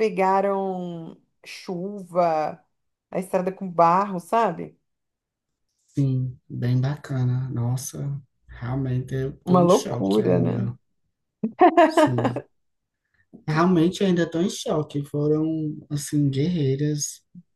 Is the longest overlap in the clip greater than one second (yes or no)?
yes